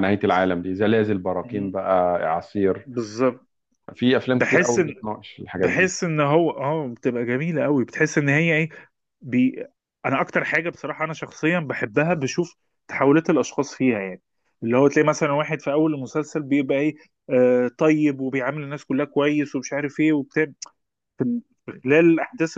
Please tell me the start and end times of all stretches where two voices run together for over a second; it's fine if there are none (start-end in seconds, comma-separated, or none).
none